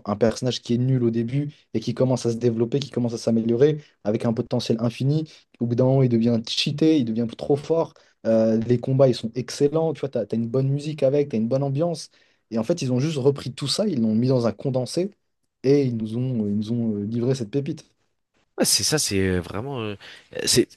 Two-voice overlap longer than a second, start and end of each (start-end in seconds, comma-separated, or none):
none